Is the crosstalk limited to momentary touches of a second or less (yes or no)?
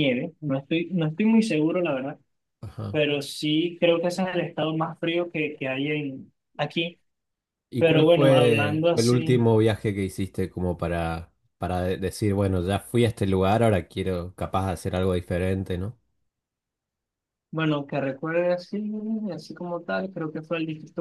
no